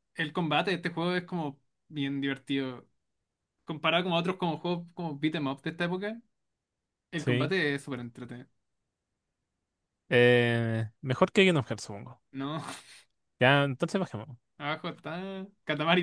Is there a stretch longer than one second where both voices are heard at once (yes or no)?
no